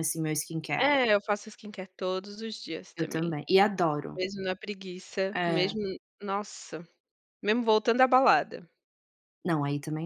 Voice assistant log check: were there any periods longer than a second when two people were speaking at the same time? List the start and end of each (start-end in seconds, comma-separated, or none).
none